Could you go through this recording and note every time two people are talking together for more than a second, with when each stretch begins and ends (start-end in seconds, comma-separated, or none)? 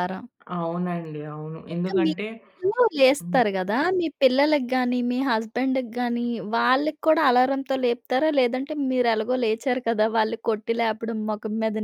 none